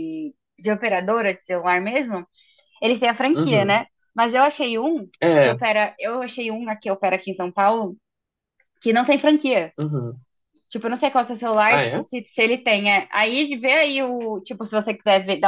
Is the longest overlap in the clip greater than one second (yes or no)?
no